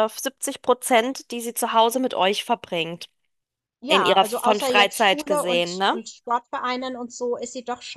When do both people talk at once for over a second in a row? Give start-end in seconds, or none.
3.9-6.0